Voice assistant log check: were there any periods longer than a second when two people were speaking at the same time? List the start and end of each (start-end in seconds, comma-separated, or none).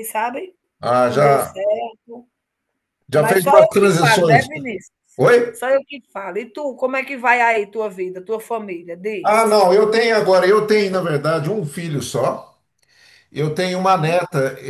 3.1-4.5